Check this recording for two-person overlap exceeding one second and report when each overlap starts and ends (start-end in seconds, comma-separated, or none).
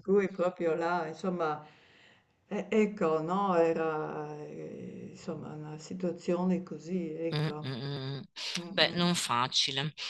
none